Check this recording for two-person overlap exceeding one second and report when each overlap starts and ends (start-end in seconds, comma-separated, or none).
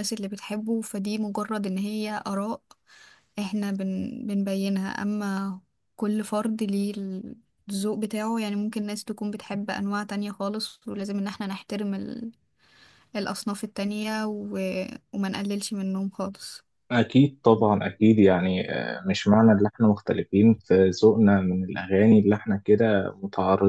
none